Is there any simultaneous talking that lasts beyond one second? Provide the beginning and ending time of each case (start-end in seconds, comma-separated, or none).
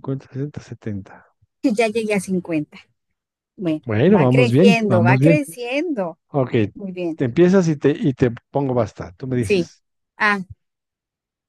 3.9-5.4